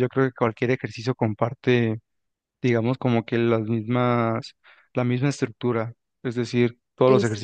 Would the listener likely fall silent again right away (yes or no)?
yes